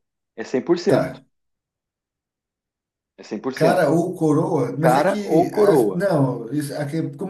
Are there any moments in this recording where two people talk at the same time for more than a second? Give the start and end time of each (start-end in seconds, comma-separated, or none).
4.8-6.1